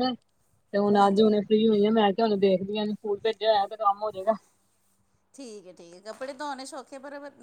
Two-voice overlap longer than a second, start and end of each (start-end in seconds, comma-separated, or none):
none